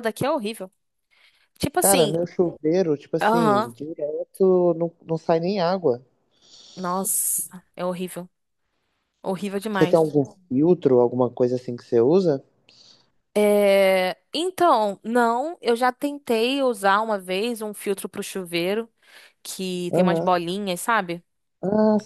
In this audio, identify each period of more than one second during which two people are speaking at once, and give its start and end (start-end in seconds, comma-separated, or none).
none